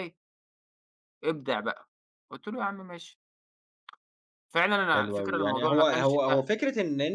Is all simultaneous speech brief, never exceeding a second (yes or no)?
no